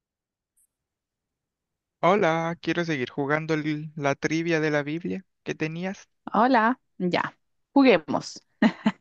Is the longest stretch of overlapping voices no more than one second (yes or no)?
yes